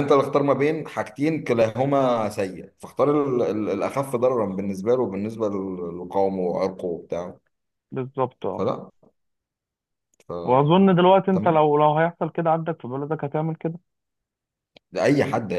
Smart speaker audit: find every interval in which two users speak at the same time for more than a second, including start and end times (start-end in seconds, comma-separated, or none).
none